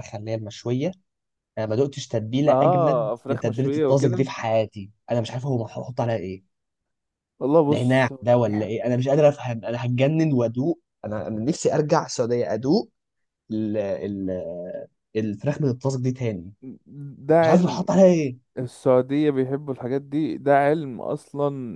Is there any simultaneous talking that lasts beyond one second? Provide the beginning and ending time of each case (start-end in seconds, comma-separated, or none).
2.5-4.3